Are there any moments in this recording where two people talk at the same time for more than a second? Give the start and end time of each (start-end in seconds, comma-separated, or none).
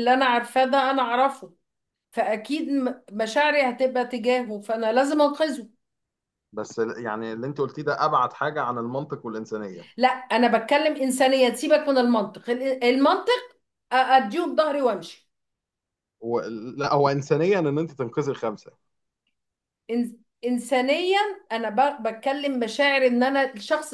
none